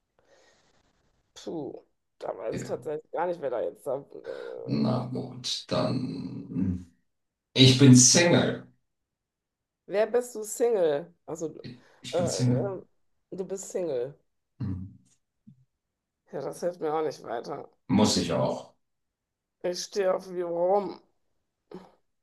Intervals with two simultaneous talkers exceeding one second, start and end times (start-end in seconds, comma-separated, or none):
none